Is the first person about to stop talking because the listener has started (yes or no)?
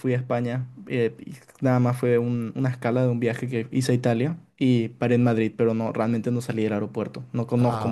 yes